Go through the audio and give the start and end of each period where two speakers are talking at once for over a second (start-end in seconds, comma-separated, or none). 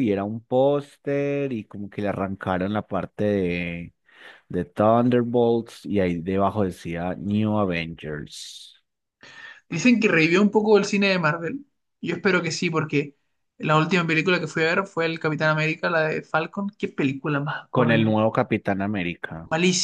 none